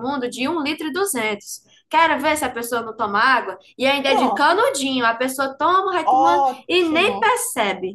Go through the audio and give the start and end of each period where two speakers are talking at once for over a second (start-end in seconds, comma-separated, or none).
6.0-7.4